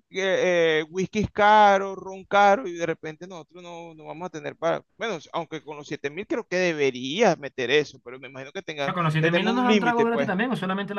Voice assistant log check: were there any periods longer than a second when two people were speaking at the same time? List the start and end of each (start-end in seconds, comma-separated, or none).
8.8-10.3